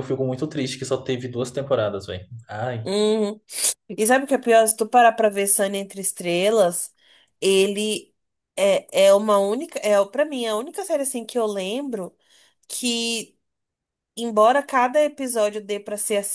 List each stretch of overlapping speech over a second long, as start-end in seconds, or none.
none